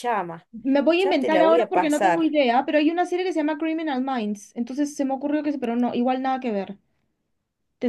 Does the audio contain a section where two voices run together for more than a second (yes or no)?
yes